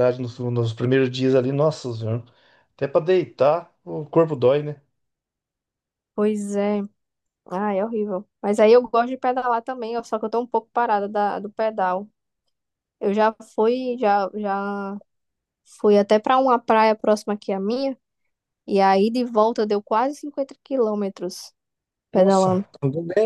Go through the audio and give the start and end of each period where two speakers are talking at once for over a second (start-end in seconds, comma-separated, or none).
none